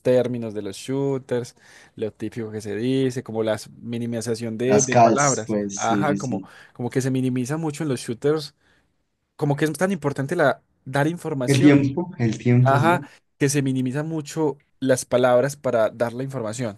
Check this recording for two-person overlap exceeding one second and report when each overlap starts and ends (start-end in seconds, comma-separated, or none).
4.7-6.5